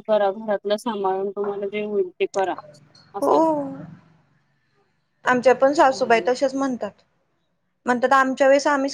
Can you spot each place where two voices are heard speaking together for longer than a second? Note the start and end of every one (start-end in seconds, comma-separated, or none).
none